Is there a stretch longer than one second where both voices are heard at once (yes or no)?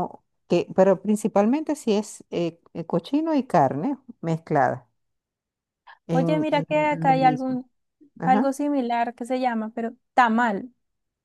yes